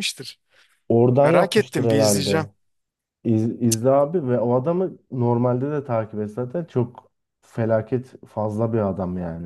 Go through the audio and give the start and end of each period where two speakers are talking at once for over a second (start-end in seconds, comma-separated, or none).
1.2-2.5